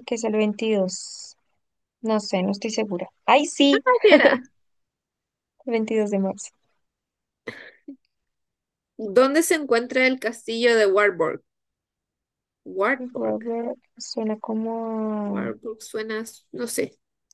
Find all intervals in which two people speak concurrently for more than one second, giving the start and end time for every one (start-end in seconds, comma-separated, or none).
none